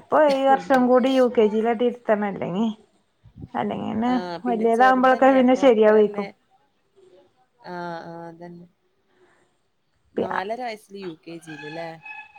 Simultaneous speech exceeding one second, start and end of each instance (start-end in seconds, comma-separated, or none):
4.5-6.3